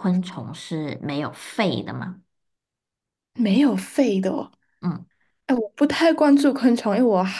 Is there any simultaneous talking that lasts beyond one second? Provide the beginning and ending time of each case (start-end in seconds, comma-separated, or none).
none